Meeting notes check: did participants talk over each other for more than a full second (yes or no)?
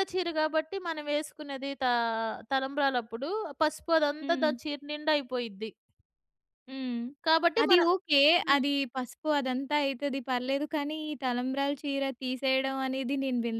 no